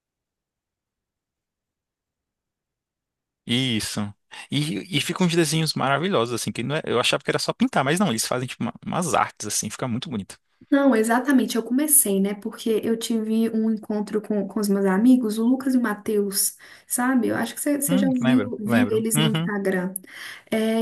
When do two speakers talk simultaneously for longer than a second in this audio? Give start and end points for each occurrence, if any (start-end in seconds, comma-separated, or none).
17.9-19.5